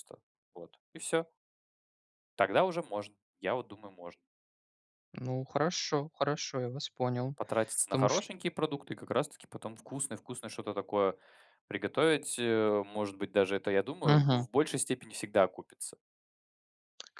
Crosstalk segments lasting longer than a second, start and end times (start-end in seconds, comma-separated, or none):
none